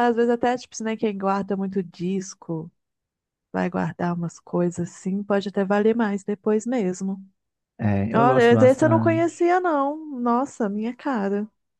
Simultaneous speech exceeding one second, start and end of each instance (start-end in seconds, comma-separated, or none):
8.1-9.3